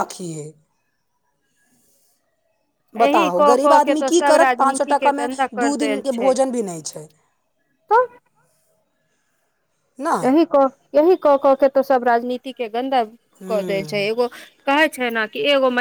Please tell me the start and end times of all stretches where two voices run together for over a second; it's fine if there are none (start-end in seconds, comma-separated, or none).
3.1-6.3